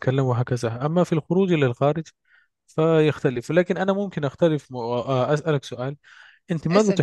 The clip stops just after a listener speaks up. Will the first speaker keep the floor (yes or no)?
yes